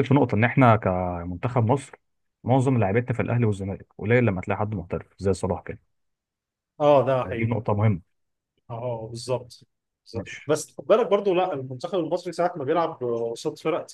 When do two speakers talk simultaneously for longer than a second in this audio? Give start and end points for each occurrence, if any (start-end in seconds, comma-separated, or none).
none